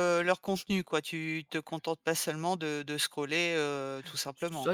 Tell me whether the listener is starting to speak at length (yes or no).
yes